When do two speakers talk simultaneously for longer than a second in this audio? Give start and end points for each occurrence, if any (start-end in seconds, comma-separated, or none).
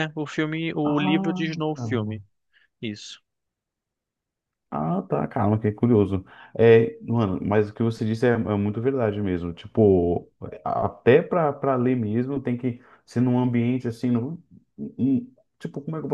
0.8-2.2